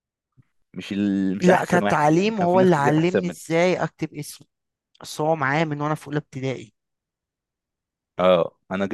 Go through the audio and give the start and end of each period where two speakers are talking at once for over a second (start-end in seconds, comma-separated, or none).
1.4-3.5